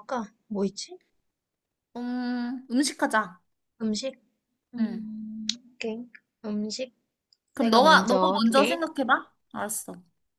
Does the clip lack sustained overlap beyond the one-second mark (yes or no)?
no